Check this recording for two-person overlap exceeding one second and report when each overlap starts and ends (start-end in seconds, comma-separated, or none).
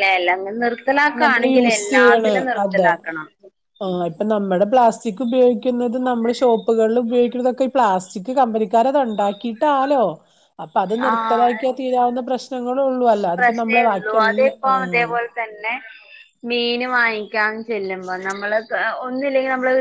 13.4-15.1